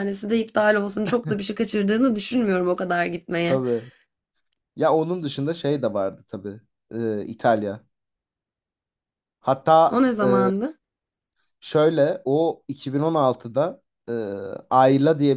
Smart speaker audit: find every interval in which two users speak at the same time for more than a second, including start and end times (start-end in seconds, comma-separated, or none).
none